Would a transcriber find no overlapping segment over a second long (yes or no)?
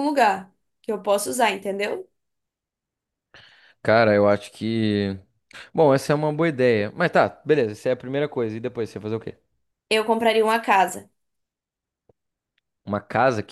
yes